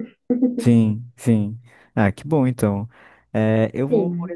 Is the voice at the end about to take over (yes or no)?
no